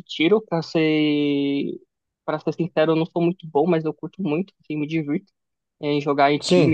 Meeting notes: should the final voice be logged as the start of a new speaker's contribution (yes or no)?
no